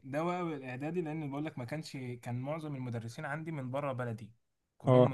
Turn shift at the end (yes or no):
no